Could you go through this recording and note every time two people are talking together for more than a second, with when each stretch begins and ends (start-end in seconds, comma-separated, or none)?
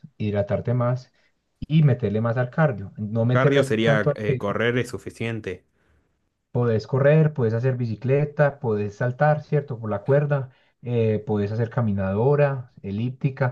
3.3-4.5